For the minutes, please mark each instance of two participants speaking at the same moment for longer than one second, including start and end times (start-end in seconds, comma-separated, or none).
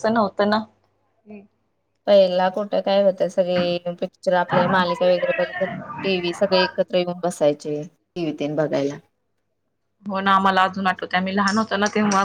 none